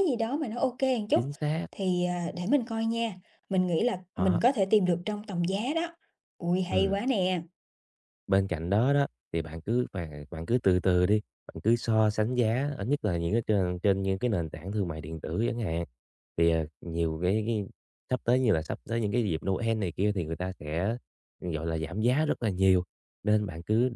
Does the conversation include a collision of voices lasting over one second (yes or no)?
no